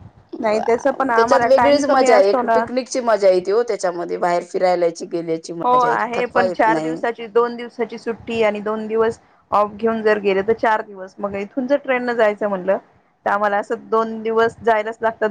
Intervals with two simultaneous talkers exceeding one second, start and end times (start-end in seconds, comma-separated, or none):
none